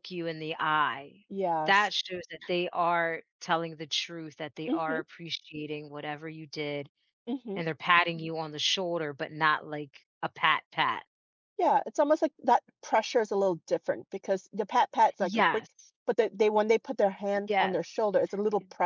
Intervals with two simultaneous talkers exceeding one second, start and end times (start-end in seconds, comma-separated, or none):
none